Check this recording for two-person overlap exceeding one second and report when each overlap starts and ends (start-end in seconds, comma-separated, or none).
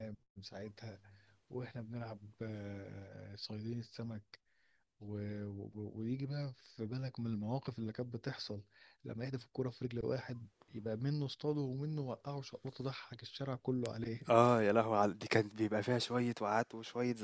none